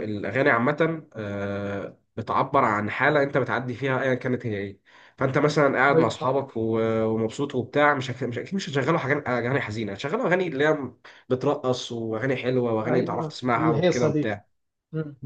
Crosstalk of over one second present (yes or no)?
yes